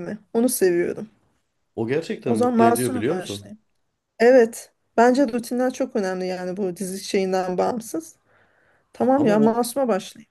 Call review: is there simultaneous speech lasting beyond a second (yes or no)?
yes